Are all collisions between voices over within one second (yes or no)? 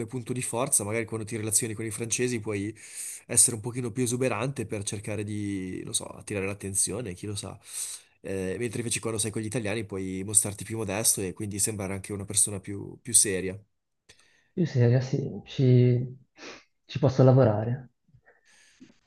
yes